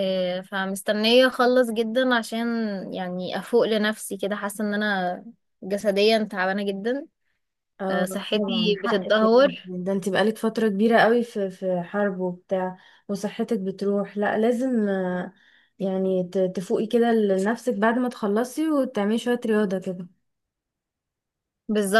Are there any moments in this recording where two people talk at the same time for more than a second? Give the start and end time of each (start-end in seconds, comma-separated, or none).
7.9-9.5